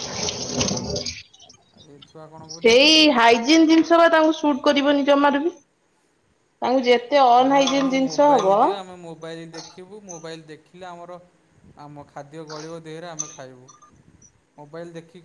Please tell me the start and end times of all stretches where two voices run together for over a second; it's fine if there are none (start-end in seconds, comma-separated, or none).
none